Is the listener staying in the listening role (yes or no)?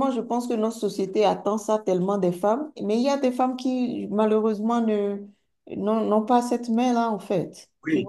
no